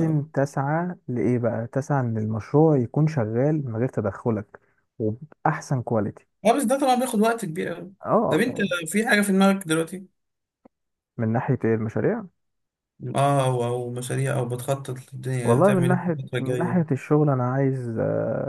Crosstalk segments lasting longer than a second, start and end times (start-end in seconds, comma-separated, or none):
15.4-16.9